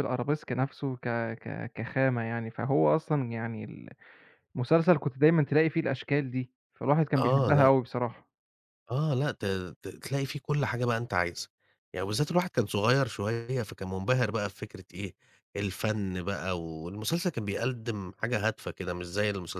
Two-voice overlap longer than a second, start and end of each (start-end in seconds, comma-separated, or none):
none